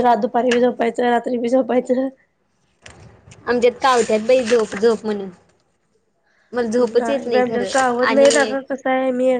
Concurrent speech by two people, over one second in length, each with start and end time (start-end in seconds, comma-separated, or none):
7.0-8.5